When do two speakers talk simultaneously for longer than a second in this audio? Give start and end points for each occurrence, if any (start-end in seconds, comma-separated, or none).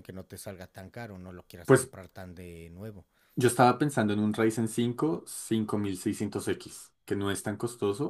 none